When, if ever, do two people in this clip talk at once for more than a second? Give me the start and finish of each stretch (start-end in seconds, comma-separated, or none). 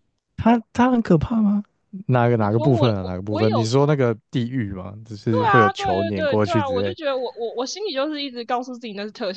2.4-3.7, 5.3-7.0